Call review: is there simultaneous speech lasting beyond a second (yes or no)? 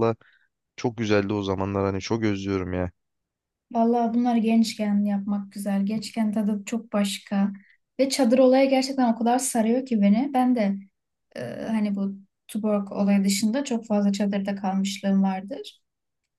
no